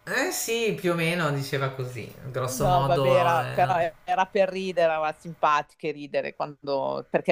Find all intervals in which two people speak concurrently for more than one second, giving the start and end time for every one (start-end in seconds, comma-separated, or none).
2.5-3.8